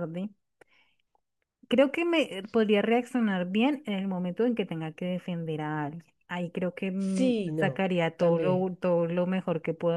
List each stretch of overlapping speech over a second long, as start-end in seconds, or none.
7.2-8.7